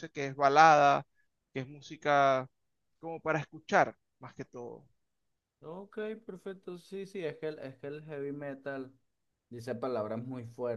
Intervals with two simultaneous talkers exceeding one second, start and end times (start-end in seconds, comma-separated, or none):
none